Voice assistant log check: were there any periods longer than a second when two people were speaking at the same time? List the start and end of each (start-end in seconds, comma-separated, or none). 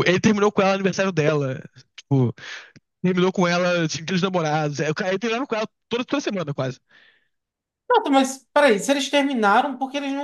none